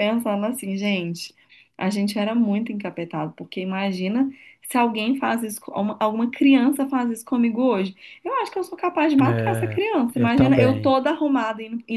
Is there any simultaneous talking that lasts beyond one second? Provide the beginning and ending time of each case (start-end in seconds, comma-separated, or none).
9.2-11.0